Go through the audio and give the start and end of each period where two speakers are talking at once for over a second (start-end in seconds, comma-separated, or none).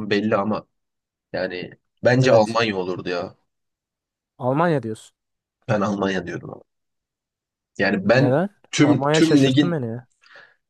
8.0-9.8